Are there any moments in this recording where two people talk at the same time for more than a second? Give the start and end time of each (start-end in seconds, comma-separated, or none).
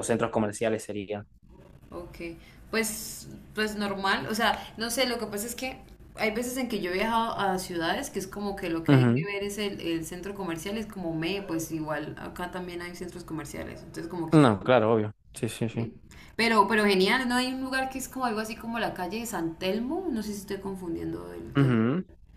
none